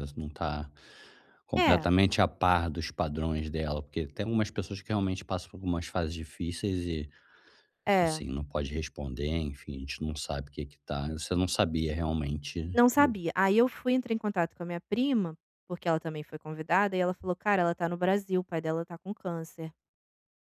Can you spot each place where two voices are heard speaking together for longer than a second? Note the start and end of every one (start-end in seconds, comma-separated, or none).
none